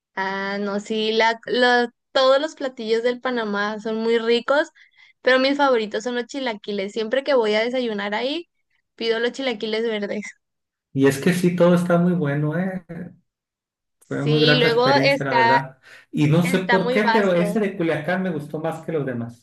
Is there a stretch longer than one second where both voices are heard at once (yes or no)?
yes